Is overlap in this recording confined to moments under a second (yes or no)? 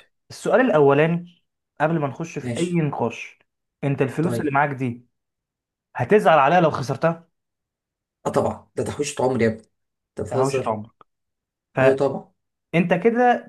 yes